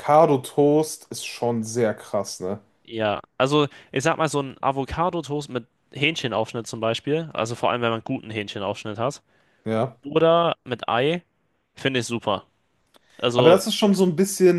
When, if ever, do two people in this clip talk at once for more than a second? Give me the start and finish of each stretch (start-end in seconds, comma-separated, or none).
none